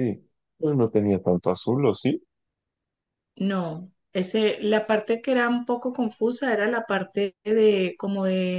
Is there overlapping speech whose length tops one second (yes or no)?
no